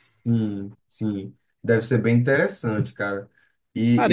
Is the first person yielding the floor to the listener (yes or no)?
no